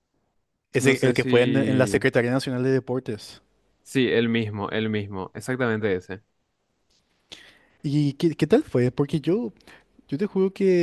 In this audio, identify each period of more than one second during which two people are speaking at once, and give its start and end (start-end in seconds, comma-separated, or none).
0.8-2.0